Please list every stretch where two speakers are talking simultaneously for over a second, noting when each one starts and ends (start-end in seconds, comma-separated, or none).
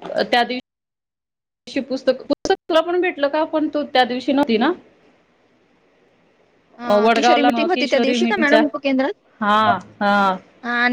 6.9-8.6